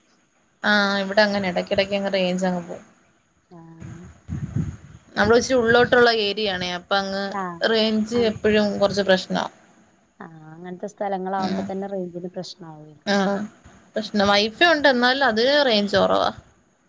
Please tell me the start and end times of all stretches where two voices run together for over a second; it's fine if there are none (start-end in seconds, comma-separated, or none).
none